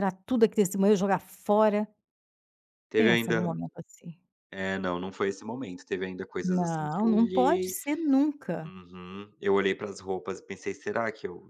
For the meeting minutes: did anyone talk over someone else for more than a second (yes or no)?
yes